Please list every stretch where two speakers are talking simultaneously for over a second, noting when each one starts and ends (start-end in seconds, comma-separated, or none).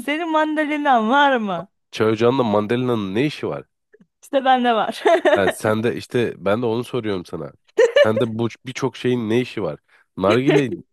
none